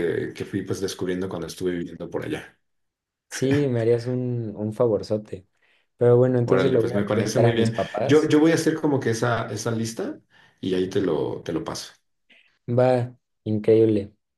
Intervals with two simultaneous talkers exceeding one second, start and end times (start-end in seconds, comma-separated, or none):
6.4-8.3